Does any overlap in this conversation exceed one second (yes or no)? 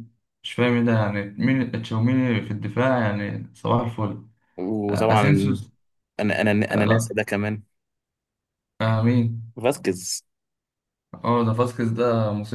no